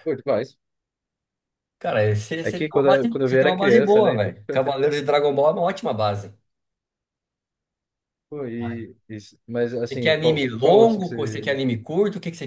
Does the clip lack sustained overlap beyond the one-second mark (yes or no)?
no